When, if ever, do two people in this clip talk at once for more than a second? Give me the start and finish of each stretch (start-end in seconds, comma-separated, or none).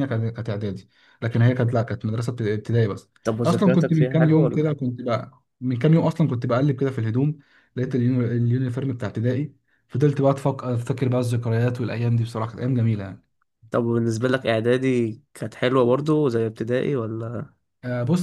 3.5-4.7